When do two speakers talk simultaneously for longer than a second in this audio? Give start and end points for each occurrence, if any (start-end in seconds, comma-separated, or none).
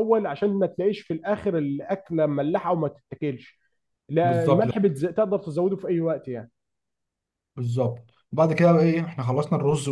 none